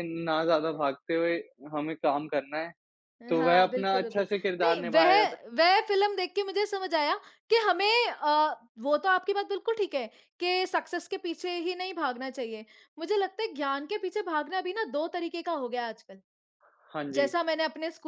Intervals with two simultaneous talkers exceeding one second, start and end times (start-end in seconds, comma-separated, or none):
3.4-5.1